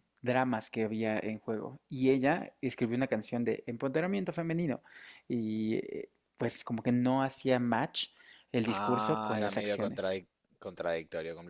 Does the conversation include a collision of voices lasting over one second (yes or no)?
yes